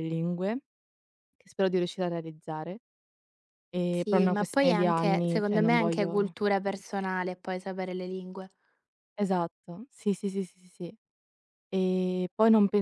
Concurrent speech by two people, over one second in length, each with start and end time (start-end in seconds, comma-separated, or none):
3.9-6.3